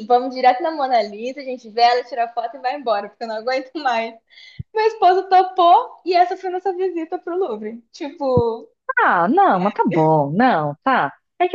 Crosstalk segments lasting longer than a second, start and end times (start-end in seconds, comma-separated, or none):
none